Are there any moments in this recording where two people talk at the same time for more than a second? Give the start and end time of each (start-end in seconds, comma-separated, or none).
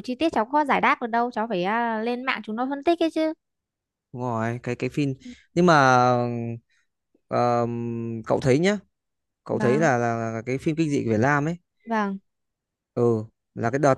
none